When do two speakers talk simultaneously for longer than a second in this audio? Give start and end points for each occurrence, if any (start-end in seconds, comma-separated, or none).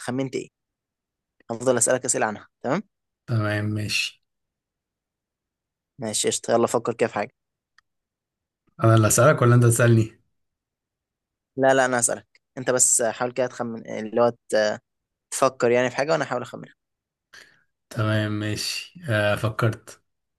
none